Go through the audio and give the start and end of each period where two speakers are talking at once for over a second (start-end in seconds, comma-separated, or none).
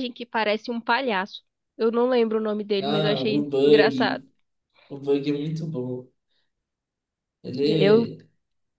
2.8-4.2